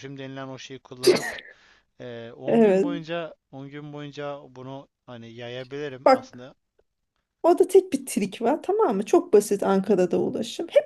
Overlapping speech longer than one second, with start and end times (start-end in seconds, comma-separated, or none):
none